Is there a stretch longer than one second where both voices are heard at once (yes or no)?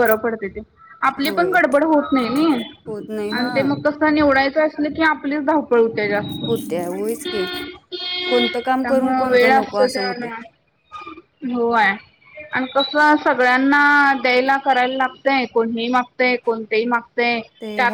yes